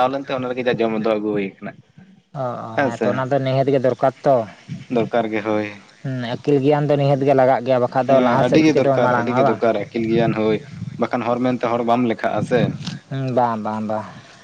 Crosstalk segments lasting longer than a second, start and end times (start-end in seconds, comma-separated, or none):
8.1-9.6